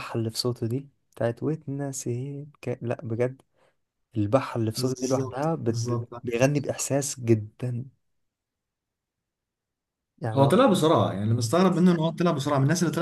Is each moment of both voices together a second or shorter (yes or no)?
no